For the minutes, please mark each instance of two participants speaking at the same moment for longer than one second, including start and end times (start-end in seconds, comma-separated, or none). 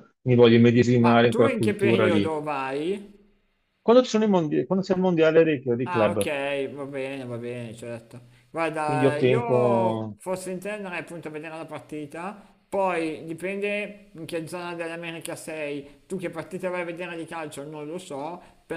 1.0-2.3, 8.8-10.2